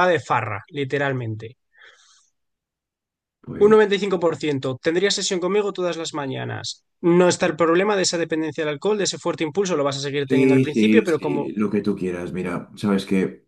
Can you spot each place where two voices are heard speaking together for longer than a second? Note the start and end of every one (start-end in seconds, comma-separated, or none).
10.2-11.5